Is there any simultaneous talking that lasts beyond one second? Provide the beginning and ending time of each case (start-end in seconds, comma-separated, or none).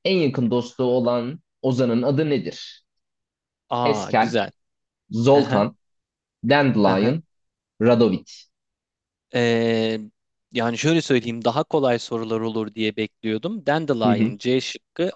none